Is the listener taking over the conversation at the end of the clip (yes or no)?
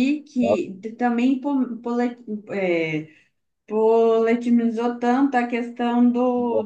no